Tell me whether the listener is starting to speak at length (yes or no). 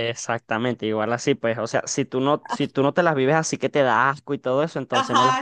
yes